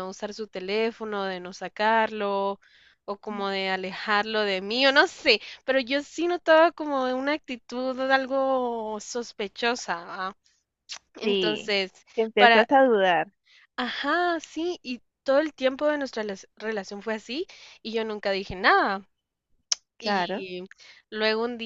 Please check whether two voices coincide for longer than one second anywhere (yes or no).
no